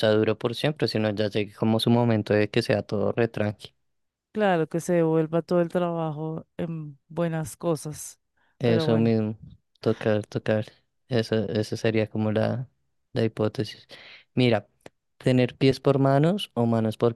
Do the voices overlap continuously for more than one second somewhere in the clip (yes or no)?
no